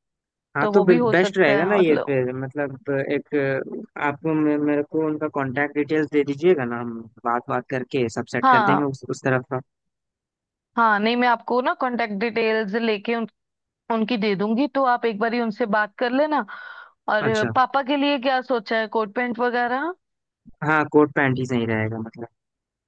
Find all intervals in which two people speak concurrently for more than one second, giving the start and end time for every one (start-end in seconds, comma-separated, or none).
0.6-2.1